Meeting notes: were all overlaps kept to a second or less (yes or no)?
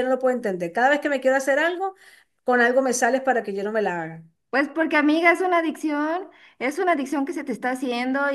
yes